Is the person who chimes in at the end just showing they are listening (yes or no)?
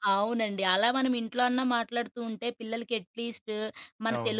yes